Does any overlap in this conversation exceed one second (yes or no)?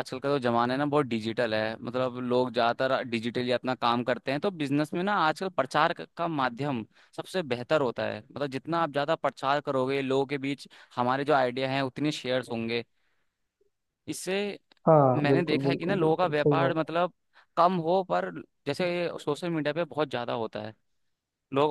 yes